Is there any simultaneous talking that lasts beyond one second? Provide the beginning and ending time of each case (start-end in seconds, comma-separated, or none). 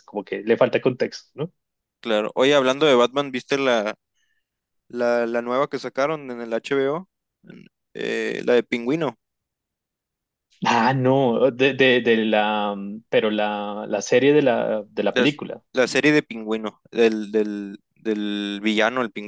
none